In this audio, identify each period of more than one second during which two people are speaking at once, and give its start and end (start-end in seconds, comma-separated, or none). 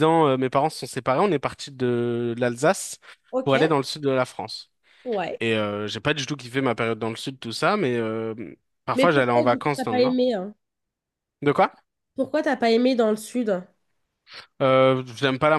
8.9-10.2